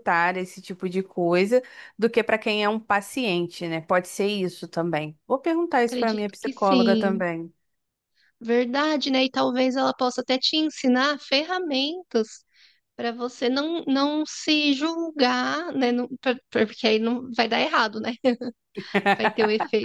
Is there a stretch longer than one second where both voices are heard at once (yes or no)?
yes